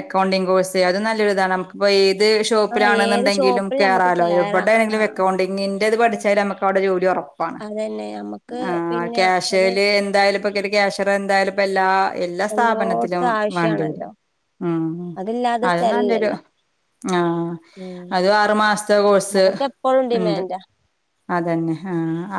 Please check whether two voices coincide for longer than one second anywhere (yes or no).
yes